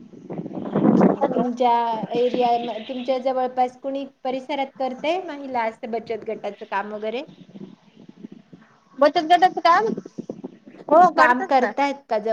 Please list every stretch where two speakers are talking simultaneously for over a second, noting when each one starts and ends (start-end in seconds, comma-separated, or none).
none